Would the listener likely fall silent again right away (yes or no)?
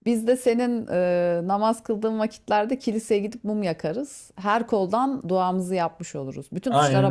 no